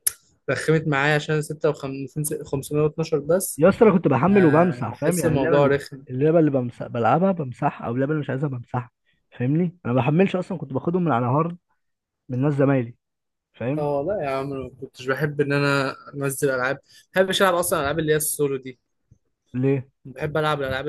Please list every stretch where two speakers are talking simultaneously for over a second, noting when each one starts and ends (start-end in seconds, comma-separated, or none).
4.3-6.0